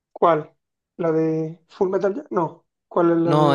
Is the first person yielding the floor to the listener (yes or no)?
yes